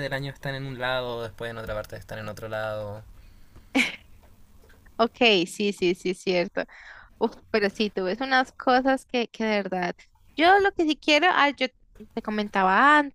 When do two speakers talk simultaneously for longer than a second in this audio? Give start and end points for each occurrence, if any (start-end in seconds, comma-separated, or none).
none